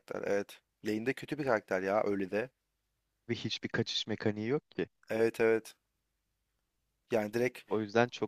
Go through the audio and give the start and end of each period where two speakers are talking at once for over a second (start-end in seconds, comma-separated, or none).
none